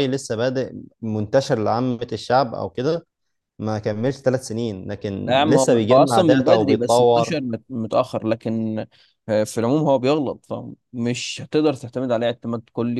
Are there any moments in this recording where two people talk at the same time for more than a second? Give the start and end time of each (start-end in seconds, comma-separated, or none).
5.2-7.4